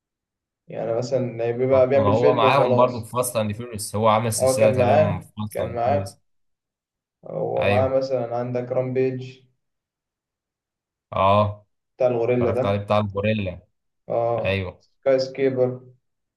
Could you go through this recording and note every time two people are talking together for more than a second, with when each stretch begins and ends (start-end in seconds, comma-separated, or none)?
1.7-3.1, 4.4-6.2